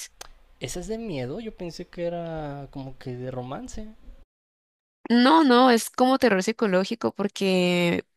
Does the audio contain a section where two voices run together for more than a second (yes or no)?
no